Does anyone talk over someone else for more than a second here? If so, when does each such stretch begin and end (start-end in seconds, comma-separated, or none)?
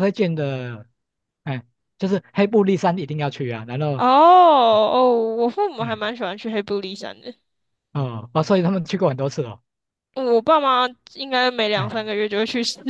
none